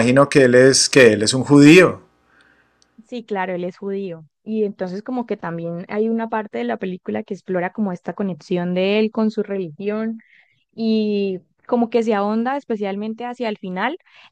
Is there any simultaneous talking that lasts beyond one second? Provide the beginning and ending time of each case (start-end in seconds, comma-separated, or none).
none